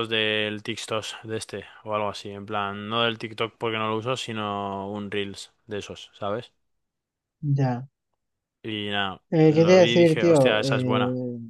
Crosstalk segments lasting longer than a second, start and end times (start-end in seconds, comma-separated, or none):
9.3-10.9